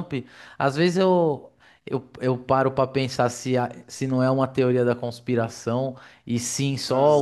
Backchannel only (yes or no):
yes